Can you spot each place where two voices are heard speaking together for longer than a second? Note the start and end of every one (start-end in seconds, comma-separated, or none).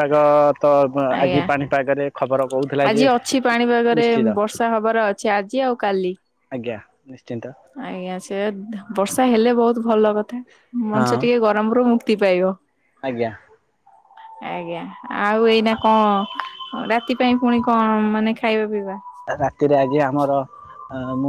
none